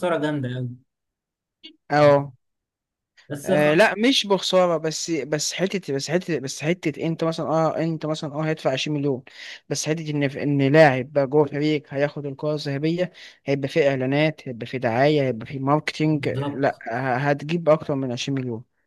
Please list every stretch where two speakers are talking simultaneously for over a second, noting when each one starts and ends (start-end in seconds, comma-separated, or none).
none